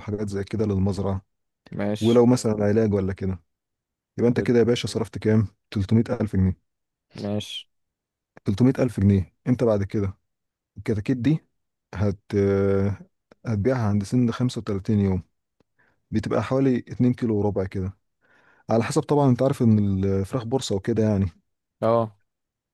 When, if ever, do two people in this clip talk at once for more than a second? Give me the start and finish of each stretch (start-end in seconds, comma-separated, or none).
none